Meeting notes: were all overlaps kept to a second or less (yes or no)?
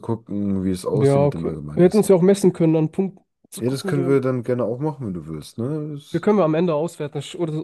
no